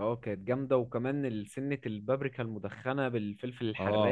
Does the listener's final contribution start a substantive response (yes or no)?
yes